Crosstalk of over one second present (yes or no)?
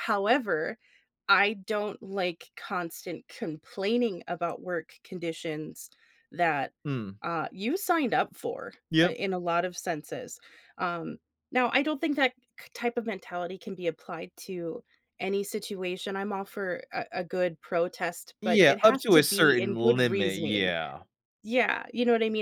yes